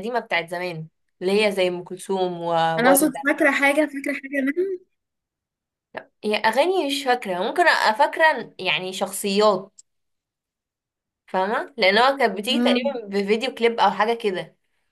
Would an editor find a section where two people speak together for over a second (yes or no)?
no